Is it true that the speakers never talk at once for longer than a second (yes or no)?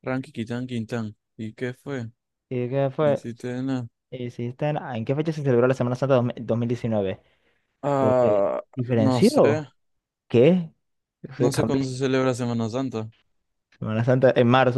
no